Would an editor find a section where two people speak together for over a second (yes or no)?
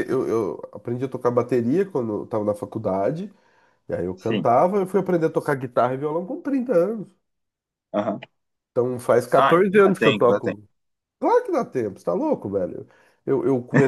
yes